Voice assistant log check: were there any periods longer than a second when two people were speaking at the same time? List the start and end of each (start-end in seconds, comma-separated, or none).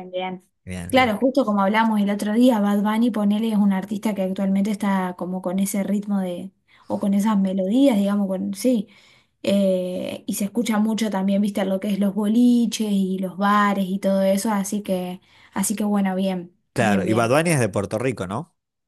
none